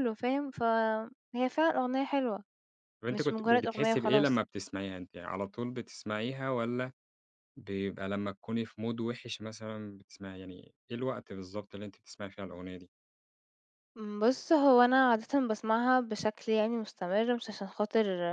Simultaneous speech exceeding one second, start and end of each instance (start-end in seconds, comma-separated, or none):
3.1-4.4